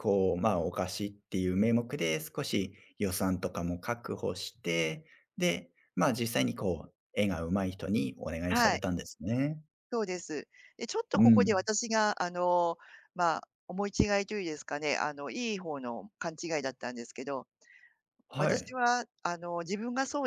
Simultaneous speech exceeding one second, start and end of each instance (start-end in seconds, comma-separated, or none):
none